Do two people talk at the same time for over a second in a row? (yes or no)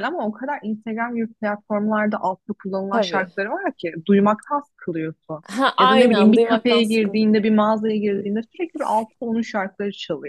yes